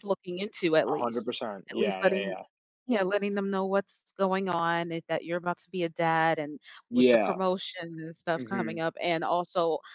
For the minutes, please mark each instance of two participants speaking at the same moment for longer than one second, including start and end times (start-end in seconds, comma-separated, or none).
0.9-2.4